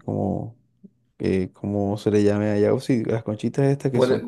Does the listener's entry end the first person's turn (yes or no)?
yes